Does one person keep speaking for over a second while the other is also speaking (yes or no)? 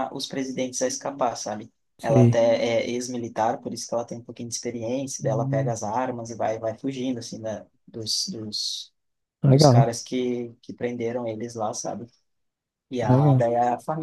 no